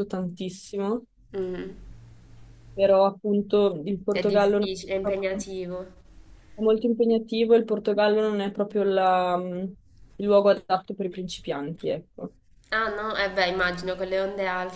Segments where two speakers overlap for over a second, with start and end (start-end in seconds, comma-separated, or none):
4.1-5.4